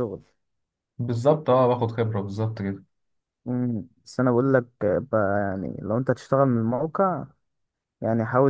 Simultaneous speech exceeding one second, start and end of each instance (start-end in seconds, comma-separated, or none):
none